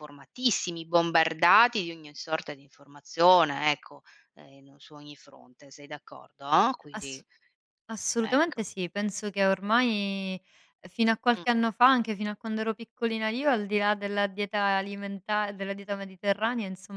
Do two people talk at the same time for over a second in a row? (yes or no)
no